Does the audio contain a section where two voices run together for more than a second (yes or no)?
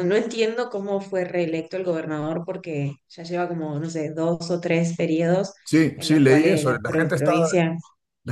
yes